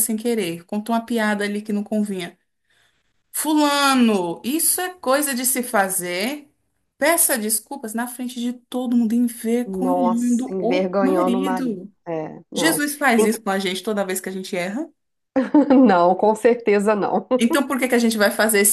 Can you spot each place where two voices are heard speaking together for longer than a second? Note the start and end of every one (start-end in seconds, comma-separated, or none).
9.7-11.9